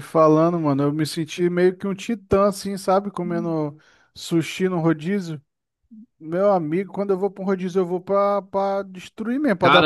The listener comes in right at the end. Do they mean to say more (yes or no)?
yes